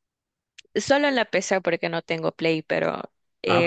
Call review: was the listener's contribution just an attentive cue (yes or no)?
no